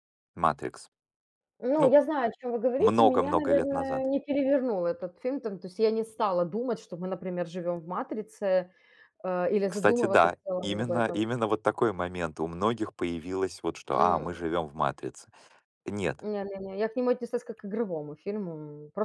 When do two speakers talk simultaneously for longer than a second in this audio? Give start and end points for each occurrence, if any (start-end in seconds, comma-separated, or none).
2.8-4.1, 9.7-11.2